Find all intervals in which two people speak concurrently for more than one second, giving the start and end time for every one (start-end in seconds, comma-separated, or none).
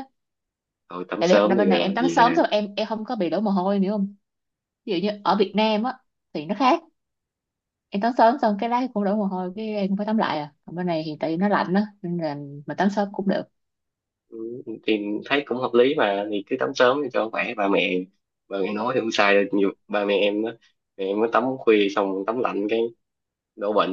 1.2-2.5